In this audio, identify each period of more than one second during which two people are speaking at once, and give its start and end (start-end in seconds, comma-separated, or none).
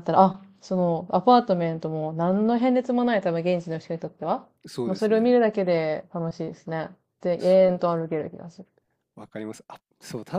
none